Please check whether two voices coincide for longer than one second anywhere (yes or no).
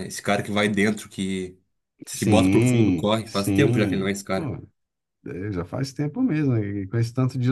yes